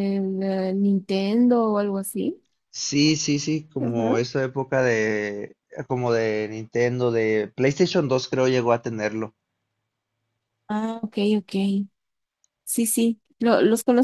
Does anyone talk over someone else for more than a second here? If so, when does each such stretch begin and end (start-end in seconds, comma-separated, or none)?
none